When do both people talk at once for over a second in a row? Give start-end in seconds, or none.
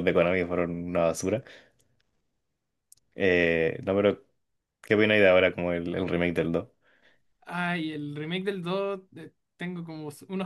none